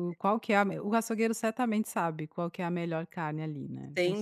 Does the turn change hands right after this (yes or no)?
yes